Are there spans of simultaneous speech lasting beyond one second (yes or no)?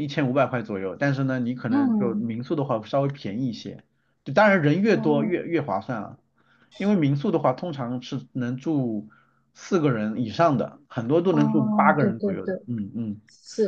yes